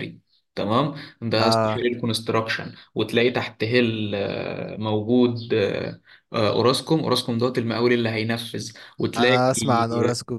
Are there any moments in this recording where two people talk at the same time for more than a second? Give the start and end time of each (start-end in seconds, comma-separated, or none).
none